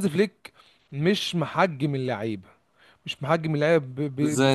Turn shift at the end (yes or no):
no